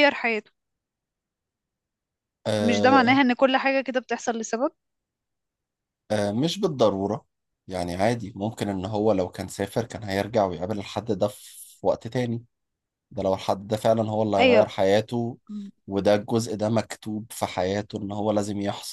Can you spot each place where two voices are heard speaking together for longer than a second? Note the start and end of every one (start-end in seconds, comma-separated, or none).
none